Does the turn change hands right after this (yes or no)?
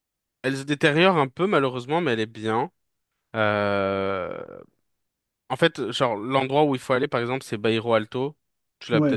yes